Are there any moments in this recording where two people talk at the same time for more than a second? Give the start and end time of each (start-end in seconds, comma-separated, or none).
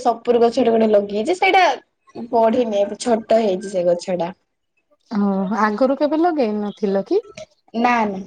none